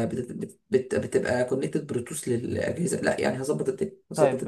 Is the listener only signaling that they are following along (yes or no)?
no